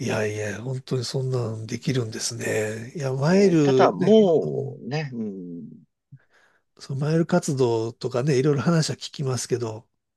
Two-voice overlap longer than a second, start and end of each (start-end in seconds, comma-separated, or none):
3.3-4.8